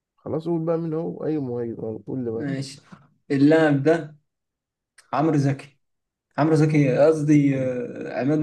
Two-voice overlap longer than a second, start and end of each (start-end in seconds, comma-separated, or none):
none